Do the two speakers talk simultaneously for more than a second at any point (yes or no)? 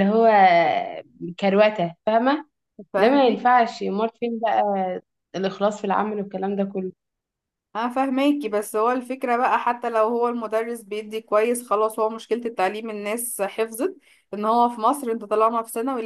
no